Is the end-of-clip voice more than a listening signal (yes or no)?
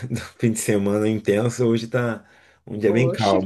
yes